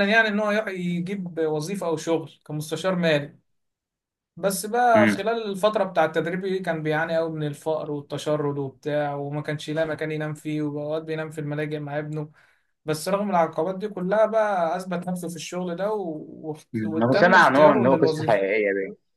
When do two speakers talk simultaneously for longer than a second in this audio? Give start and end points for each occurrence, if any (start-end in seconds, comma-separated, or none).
16.8-18.6